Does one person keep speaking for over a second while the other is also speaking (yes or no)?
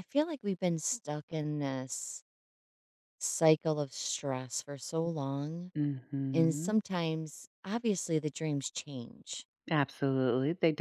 no